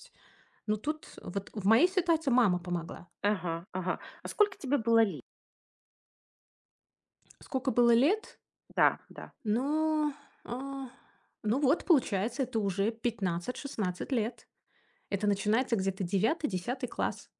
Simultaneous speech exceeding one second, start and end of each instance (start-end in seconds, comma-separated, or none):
none